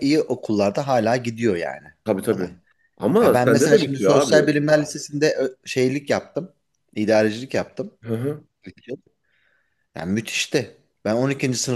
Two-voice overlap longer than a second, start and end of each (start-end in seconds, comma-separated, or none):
3.2-4.6